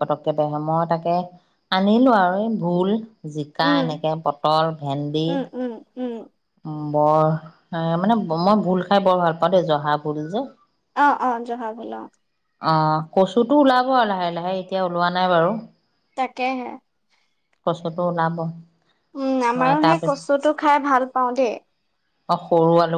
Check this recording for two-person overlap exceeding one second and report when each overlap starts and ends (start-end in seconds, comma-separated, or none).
none